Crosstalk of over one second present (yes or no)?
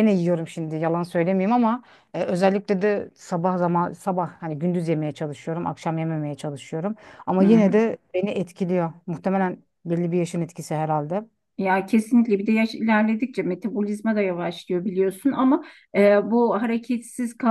no